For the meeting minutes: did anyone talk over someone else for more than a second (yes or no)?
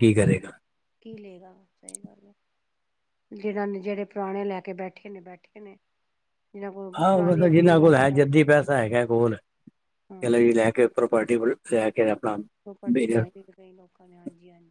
yes